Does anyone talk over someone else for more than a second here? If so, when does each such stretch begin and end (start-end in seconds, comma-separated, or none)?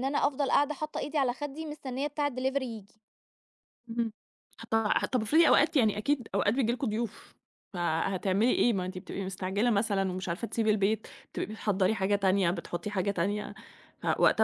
none